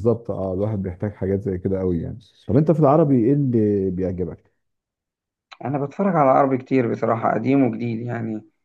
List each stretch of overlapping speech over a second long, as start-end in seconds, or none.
none